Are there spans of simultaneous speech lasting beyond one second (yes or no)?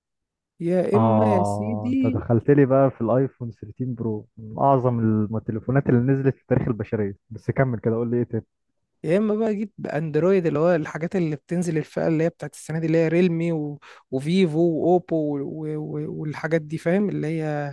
yes